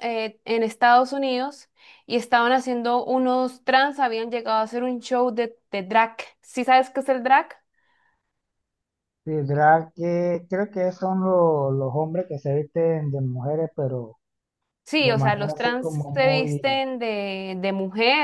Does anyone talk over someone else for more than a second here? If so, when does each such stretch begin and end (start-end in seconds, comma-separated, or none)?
15.0-16.8